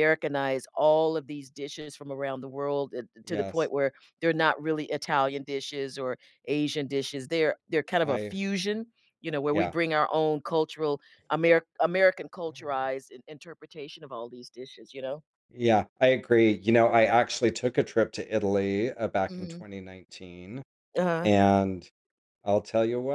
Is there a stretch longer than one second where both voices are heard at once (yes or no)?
no